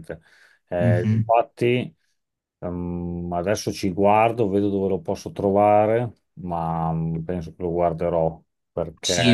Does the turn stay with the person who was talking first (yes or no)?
no